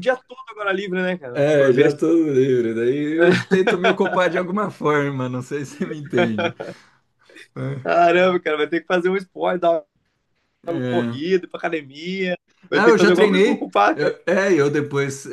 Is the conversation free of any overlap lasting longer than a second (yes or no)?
no